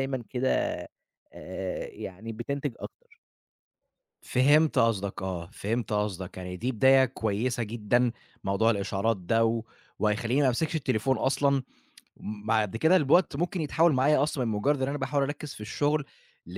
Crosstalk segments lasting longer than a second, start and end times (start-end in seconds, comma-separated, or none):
none